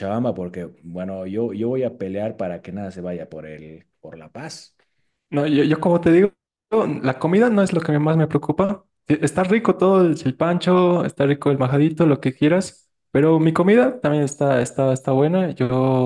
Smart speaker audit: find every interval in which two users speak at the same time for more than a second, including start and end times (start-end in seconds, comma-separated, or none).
none